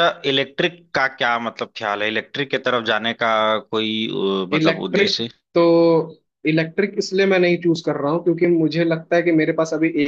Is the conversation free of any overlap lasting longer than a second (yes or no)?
yes